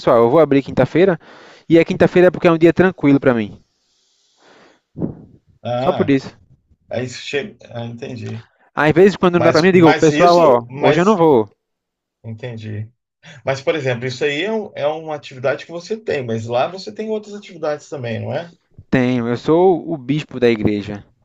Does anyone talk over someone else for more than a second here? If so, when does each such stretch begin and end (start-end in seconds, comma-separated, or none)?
9.3-11.2